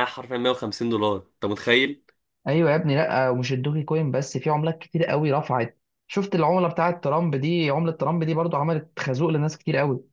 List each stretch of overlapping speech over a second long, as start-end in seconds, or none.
none